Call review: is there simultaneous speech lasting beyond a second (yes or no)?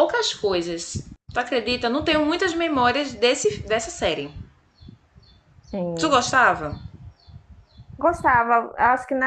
no